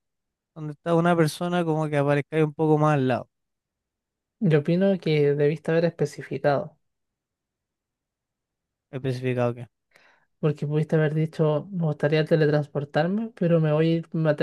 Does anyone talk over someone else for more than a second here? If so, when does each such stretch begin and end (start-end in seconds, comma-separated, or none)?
none